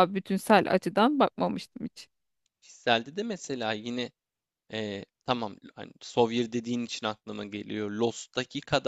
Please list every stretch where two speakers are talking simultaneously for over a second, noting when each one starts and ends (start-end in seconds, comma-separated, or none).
none